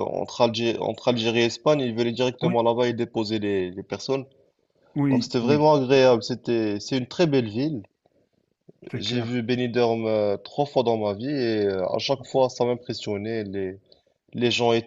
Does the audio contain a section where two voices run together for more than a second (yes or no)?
no